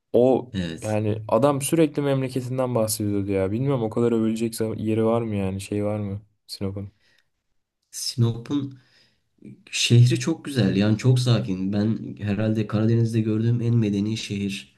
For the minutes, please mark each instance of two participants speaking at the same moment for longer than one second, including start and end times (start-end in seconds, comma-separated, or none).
none